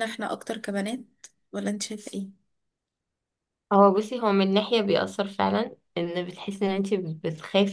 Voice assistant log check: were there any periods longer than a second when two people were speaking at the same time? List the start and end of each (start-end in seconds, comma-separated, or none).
none